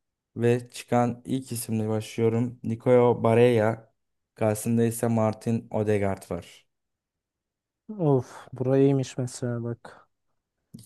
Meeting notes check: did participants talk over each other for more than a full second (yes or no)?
no